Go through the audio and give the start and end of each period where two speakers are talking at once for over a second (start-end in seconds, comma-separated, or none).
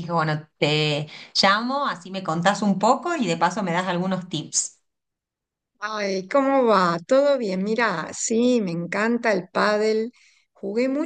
none